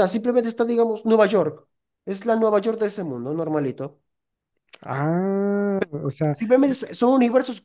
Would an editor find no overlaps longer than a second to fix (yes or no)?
yes